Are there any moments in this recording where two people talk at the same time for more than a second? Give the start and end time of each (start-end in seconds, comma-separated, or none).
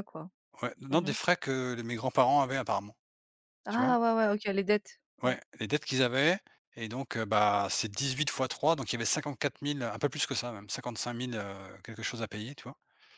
none